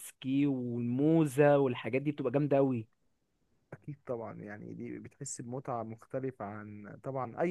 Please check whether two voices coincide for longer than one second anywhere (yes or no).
no